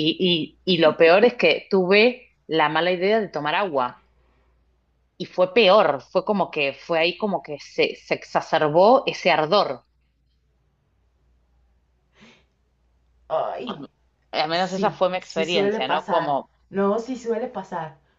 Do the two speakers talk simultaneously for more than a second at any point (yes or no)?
yes